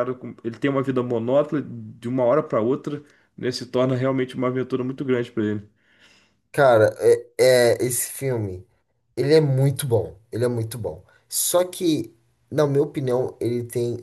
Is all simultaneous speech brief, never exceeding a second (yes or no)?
yes